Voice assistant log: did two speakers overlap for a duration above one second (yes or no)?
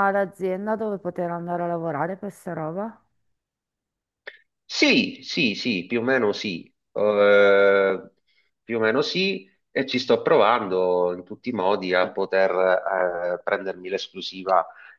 no